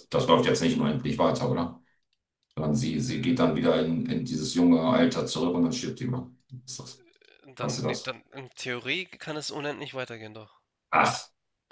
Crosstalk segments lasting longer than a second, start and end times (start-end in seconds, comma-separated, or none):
none